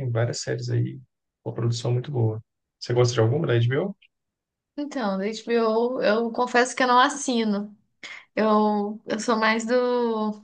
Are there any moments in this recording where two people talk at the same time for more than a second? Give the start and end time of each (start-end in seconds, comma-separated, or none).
none